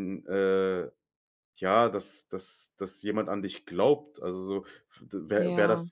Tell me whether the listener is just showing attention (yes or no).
yes